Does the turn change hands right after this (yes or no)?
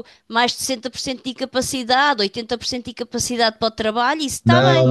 yes